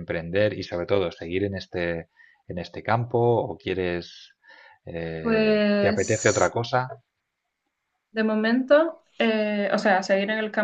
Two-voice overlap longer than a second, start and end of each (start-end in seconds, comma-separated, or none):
5.2-6.5